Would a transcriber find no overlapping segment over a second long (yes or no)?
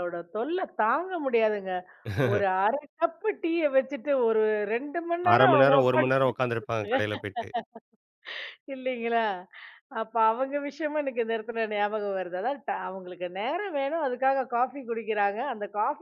no